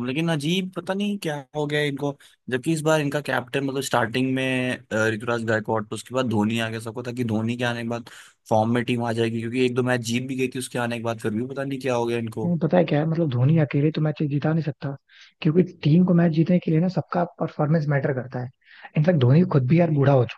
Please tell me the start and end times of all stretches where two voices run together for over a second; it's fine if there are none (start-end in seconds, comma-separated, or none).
none